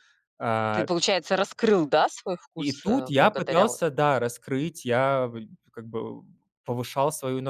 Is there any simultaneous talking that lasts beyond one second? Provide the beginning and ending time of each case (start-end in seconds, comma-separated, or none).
2.5-3.8